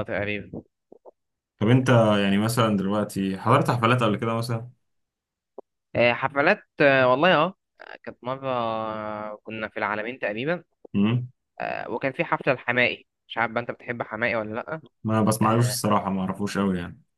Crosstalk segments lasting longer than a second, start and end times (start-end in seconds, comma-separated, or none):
none